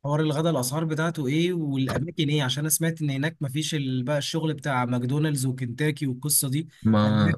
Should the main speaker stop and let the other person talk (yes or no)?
no